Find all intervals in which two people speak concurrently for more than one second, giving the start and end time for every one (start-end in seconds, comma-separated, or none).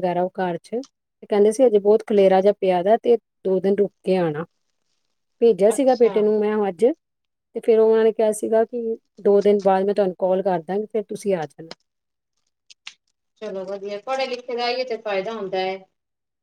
none